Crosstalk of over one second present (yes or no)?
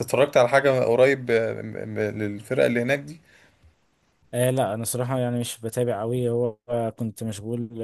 no